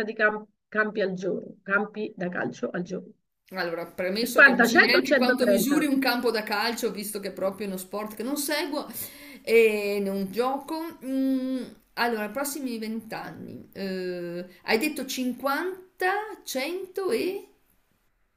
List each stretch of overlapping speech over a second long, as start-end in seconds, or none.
4.2-5.8